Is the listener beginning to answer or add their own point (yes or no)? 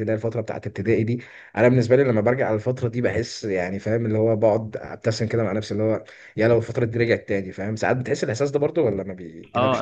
yes